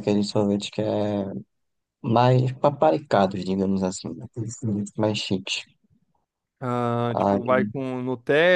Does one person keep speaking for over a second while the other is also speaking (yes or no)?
no